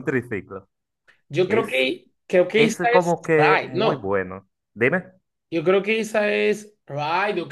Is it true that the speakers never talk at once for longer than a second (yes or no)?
no